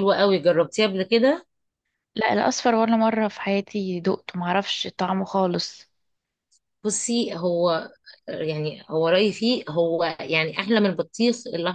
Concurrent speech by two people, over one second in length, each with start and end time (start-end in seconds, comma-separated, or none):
none